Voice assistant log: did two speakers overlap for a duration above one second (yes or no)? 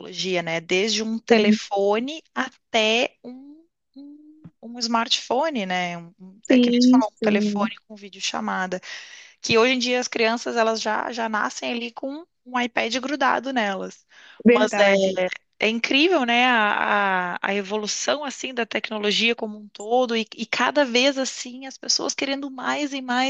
yes